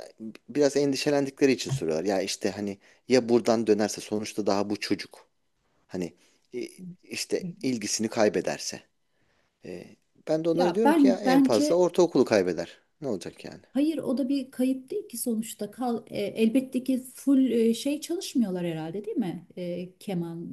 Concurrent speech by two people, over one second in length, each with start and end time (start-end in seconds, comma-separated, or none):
10.5-11.8